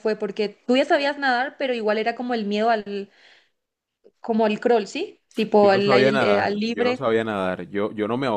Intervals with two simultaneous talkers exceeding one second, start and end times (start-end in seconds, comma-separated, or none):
5.6-7.0